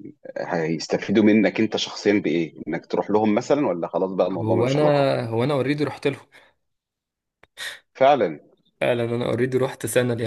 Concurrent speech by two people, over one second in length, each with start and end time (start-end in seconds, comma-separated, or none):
none